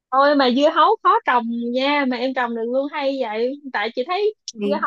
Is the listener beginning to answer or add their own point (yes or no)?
no